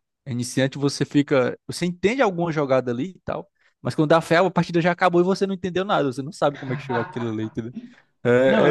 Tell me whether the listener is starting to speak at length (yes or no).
yes